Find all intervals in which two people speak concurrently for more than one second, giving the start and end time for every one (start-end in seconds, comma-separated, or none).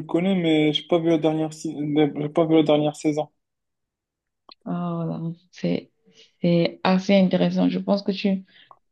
none